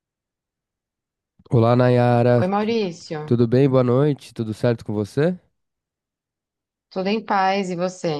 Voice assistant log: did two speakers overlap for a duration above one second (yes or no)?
no